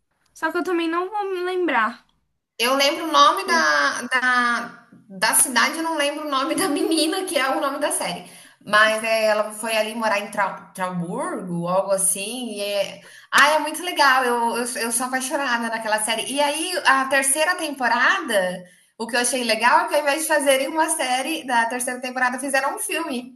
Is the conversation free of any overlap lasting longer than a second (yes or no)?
yes